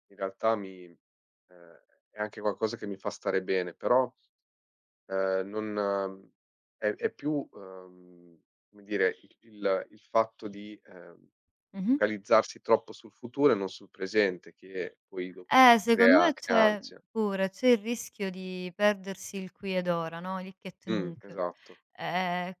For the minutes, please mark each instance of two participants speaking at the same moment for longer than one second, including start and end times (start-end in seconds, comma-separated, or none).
15.5-17.0